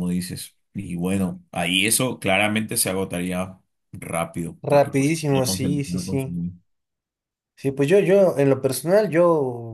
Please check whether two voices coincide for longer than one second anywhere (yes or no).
yes